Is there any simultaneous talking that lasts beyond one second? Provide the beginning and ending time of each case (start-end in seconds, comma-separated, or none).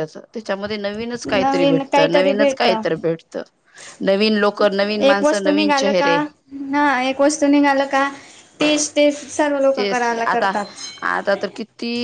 1.2-2.7